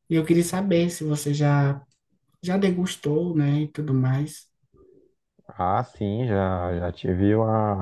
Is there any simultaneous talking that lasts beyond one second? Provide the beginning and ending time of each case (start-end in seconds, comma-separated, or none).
none